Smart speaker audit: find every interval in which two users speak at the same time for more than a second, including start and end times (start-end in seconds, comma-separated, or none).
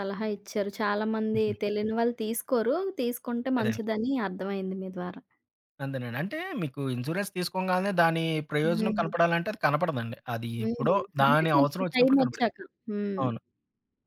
10.6-12.5